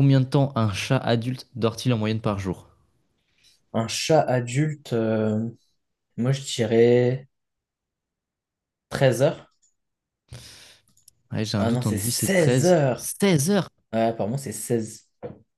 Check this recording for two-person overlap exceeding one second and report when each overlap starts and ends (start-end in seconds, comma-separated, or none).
11.6-13.1